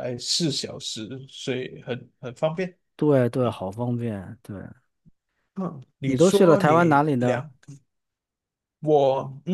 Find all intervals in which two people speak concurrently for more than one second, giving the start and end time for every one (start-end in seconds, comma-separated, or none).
6.0-7.5